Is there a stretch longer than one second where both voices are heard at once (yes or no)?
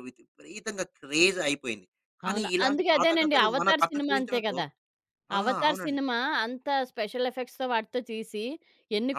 yes